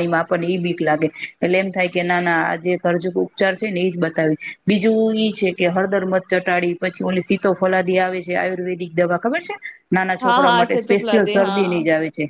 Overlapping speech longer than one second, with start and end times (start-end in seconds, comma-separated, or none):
10.2-11.8